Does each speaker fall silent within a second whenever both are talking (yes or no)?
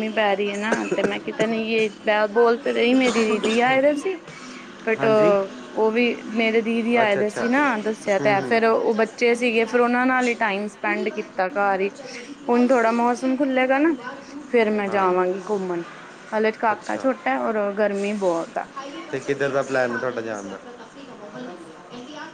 yes